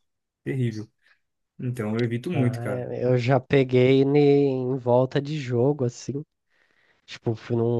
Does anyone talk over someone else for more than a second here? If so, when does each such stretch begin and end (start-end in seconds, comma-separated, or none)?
none